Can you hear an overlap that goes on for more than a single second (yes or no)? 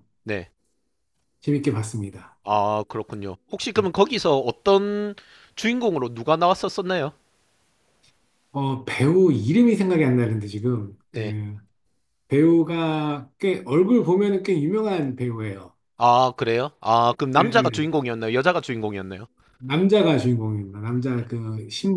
no